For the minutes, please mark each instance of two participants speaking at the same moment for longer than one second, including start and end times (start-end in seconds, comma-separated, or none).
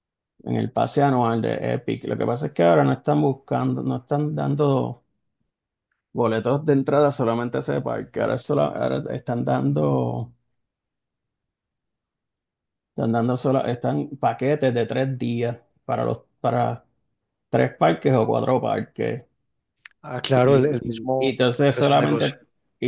20.3-22.3